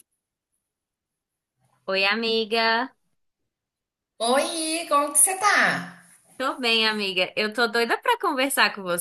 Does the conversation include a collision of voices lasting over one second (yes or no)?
no